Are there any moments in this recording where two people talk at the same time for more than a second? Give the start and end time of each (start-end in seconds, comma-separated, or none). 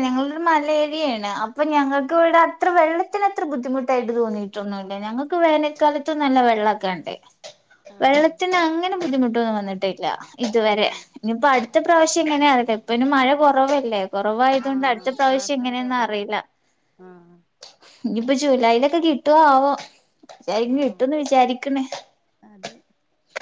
14.7-16.4